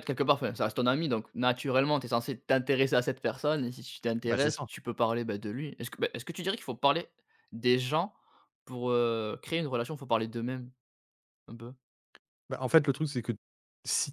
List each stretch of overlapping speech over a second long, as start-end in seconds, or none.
none